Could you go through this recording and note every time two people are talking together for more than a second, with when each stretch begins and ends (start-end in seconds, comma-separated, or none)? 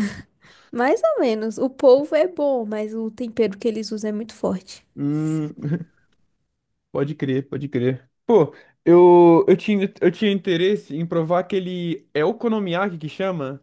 none